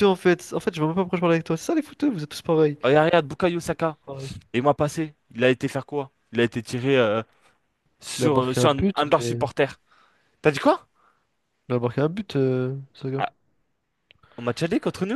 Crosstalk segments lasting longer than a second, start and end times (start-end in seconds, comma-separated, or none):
8.2-9.4